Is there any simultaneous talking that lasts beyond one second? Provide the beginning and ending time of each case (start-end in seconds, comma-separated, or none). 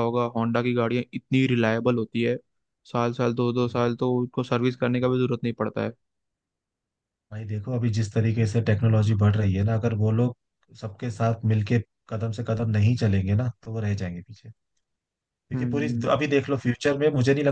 none